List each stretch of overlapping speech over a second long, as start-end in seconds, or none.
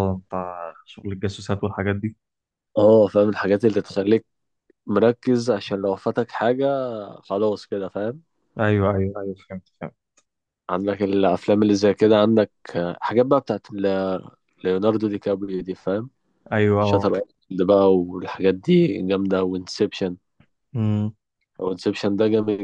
none